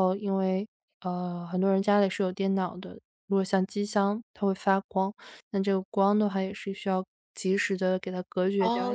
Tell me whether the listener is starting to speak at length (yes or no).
yes